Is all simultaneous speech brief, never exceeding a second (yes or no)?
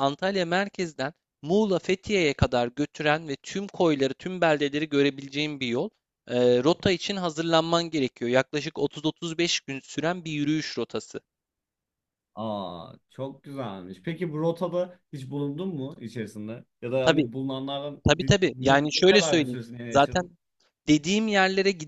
no